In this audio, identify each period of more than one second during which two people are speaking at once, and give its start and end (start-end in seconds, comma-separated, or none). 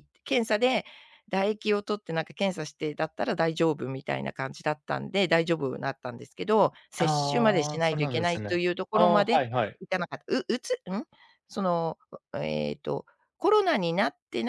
7.0-9.4